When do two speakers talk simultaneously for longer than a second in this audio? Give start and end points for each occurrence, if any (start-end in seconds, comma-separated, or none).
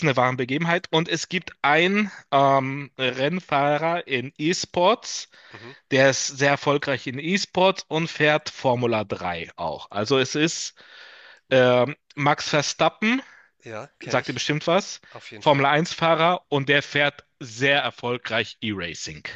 none